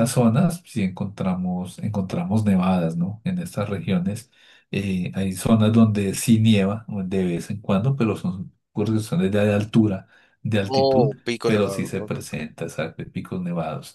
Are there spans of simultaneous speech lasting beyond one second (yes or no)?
yes